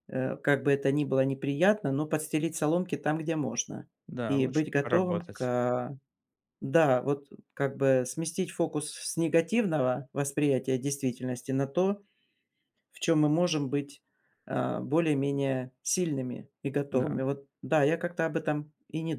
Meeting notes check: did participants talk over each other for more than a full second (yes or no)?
yes